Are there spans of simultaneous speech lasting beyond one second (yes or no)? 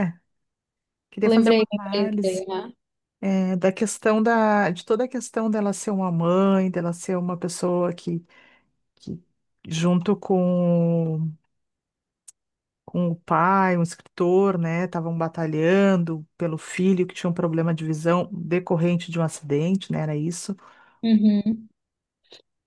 yes